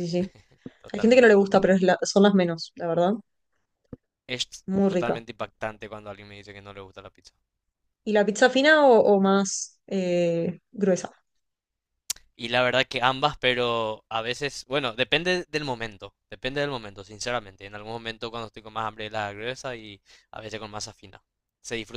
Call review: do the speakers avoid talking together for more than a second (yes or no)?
yes